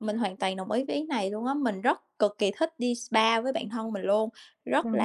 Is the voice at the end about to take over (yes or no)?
no